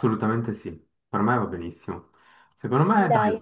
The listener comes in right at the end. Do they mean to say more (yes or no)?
no